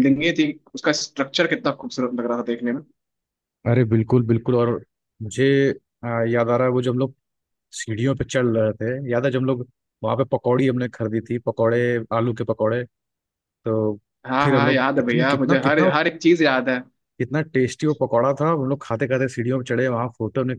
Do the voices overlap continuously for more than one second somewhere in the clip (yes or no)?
yes